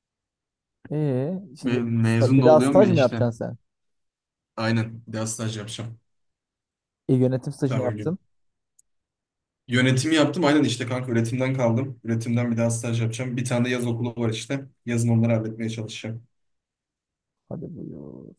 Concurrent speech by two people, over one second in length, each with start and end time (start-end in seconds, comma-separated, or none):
1.6-3.2